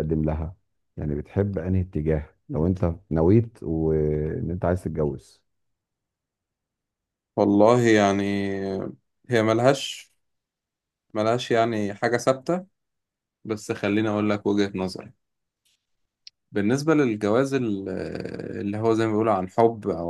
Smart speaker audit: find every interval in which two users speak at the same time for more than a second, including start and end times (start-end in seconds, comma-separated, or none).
none